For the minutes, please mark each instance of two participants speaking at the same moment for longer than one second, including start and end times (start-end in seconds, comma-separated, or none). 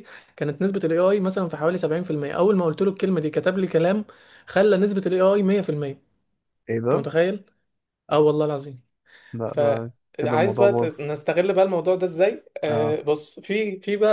9.4-11.1